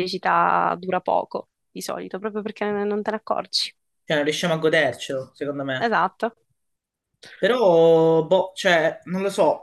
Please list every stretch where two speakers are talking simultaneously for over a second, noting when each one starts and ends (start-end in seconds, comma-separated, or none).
none